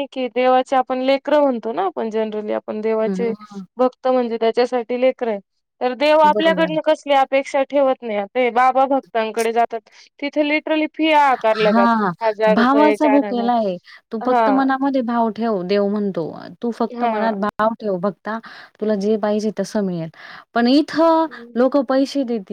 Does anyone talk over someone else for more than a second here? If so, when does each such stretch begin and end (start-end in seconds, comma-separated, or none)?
none